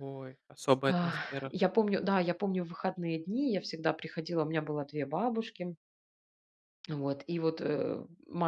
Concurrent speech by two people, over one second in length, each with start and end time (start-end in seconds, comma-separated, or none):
none